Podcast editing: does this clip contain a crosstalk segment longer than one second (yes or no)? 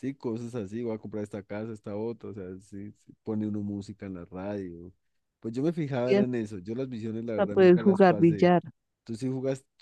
yes